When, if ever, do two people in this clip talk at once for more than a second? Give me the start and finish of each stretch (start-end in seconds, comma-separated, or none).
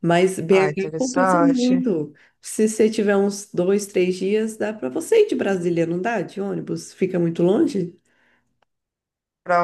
0.5-1.8